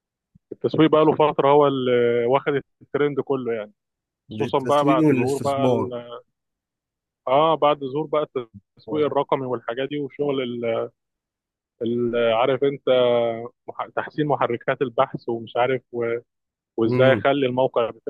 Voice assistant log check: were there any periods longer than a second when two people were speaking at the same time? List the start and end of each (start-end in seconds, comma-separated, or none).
4.3-5.9